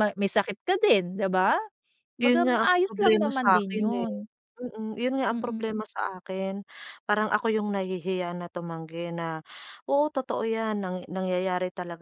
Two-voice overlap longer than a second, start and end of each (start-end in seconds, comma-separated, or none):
2.2-4.1